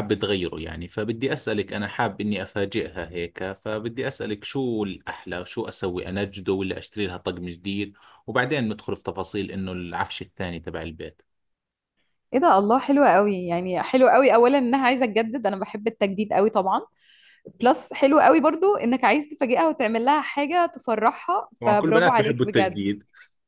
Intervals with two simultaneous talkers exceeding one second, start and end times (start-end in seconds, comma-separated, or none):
21.6-22.8